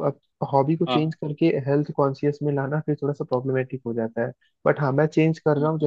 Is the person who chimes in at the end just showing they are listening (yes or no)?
yes